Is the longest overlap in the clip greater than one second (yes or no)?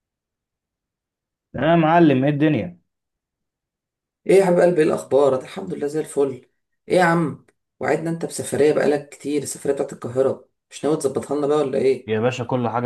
no